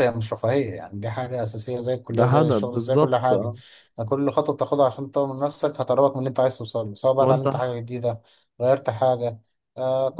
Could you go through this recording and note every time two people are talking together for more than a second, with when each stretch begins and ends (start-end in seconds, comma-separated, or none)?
2.1-3.5